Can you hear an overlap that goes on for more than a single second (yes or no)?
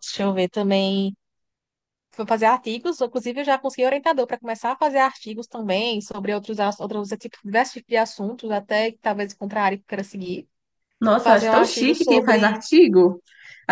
yes